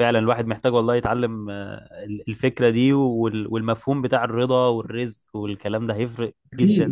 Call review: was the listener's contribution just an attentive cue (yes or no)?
no